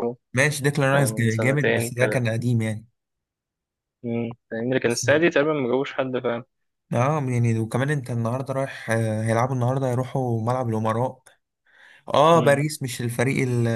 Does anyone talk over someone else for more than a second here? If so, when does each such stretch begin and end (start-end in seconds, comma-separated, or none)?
0.9-2.3